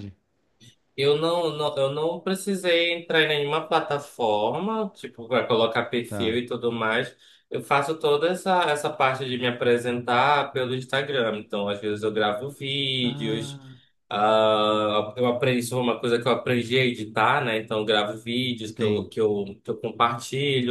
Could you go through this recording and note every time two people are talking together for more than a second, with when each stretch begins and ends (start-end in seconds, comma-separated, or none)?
none